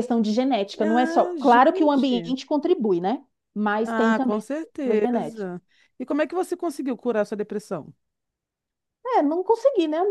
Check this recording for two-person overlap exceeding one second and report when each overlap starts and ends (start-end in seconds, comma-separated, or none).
0.8-2.4, 3.9-5.5